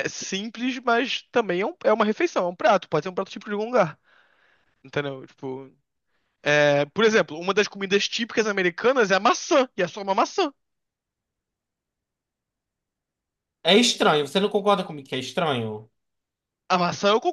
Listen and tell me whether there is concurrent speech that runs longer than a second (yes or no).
no